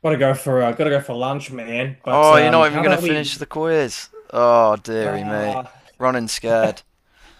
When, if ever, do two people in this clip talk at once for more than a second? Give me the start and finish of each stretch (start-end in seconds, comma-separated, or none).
2.1-3.4